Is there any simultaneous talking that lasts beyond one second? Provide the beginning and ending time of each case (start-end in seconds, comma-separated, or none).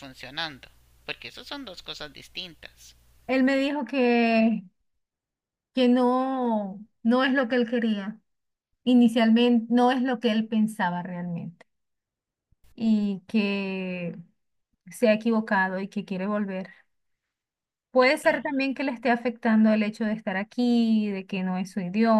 none